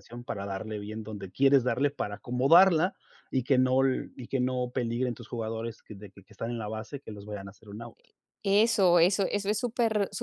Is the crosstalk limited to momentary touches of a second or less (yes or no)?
yes